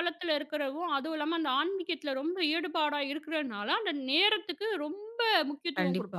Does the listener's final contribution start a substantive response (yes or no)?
yes